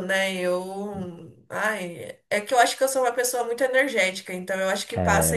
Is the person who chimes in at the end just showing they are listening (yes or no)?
no